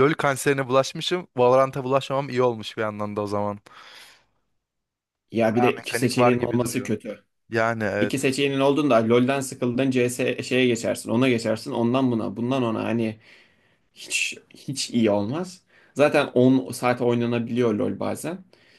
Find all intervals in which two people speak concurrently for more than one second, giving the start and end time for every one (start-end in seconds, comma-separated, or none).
5.5-6.9